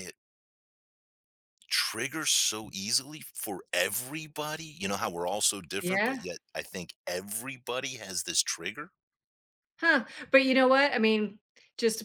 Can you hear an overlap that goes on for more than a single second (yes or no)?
no